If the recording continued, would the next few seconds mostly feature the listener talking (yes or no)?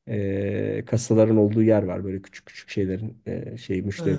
yes